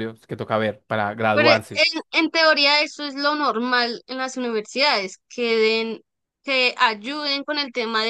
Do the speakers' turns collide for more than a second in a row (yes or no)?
no